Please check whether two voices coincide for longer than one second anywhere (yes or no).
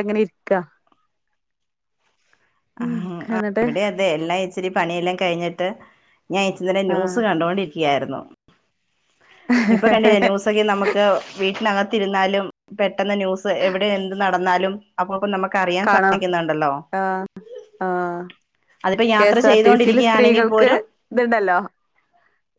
yes